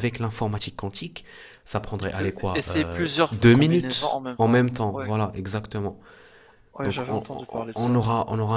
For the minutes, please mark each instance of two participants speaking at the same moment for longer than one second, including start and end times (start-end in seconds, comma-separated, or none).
2.0-5.1, 6.8-8.0